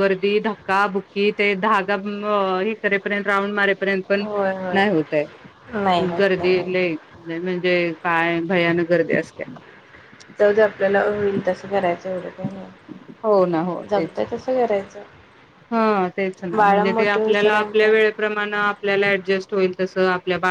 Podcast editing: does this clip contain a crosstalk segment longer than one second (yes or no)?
yes